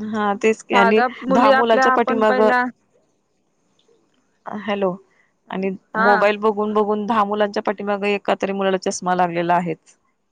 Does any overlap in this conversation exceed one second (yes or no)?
yes